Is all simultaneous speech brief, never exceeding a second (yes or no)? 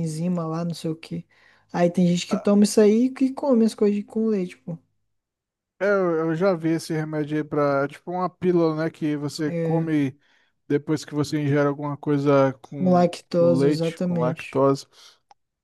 no